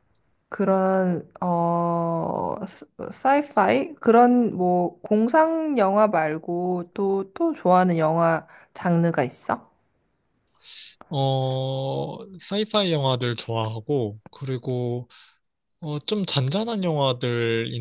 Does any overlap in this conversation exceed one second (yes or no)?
no